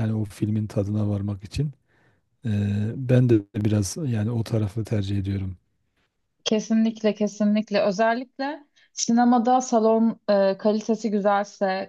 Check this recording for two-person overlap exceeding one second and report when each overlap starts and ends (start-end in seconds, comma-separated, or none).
none